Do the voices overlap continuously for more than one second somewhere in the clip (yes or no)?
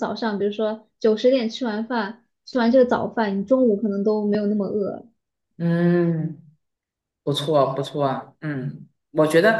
no